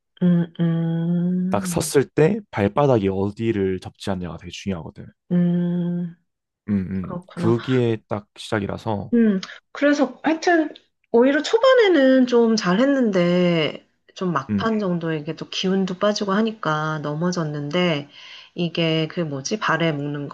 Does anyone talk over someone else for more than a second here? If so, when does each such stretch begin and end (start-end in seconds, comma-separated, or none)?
none